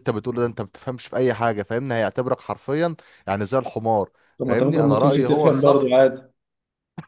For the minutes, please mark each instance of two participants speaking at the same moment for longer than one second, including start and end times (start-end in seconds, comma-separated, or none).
4.4-5.9